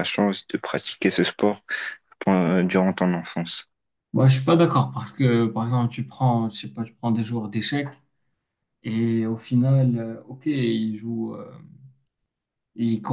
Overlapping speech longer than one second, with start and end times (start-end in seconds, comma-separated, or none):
none